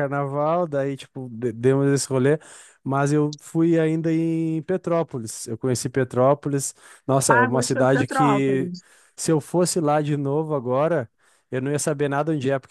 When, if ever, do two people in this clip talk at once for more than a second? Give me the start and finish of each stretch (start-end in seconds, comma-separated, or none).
7.3-8.7